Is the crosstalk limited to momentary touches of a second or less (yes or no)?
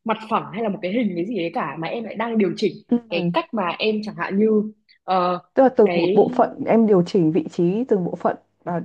yes